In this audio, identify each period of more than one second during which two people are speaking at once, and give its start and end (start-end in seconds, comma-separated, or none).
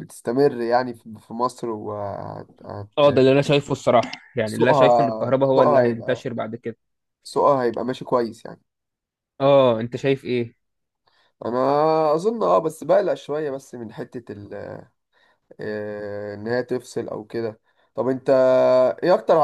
4.5-6.3